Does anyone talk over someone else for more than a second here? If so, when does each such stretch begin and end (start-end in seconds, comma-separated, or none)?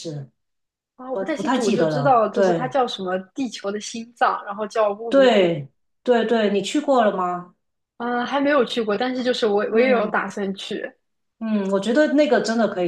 1.1-2.7